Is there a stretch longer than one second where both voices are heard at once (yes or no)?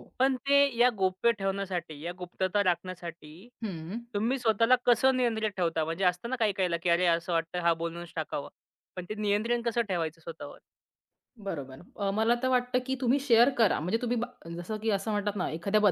no